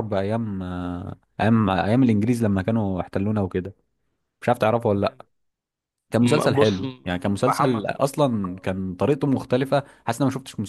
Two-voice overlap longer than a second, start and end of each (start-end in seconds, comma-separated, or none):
6.2-8.7